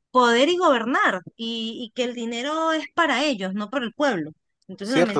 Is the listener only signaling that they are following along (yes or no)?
yes